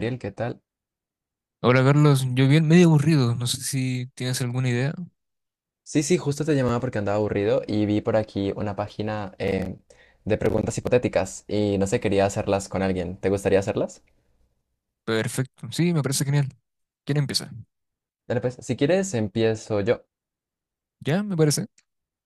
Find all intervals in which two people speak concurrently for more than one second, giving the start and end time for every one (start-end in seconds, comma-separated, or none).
none